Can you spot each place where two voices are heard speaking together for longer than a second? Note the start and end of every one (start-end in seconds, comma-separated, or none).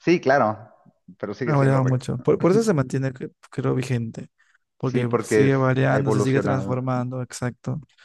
4.8-6.8